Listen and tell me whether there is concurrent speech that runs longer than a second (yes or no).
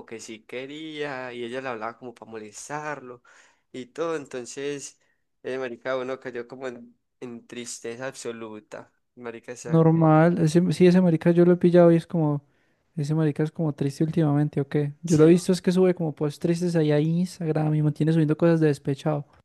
no